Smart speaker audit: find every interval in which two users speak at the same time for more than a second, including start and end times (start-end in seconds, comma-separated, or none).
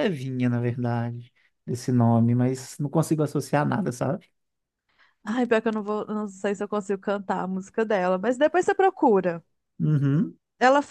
none